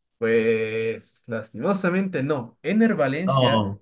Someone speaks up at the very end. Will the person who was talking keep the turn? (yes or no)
yes